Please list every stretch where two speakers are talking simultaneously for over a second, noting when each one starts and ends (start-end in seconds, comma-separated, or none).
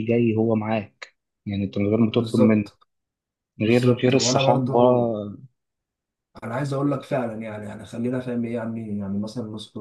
3.6-4.8